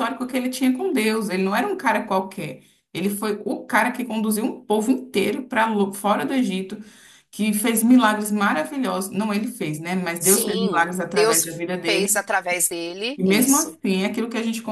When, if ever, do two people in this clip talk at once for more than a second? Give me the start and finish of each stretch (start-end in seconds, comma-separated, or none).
10.2-12.2